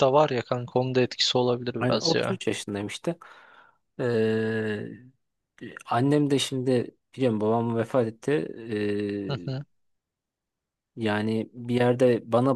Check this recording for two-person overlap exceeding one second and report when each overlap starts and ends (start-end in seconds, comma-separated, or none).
none